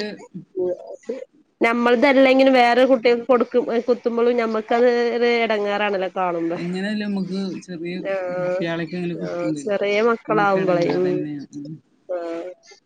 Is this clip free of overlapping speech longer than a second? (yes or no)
yes